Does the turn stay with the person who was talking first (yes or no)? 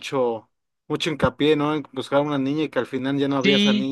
no